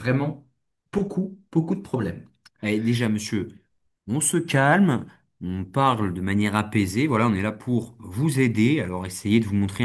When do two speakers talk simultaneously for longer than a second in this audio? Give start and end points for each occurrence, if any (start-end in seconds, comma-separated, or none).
none